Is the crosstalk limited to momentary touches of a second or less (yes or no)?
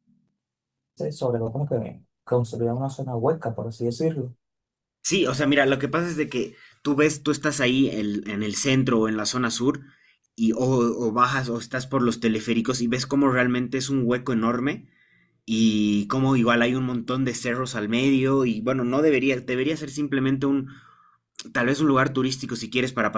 yes